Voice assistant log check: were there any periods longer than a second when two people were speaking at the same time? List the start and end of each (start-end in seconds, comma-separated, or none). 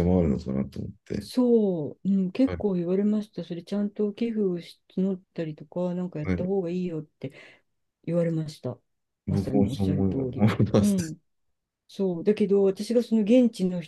9.3-11.2